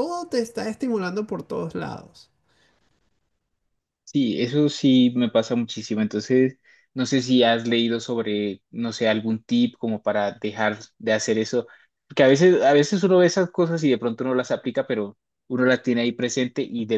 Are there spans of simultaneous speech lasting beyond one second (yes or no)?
no